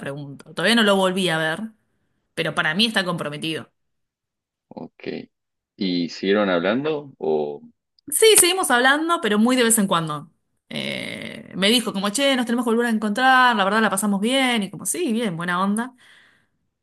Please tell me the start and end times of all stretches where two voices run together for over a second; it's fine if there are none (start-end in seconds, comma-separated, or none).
none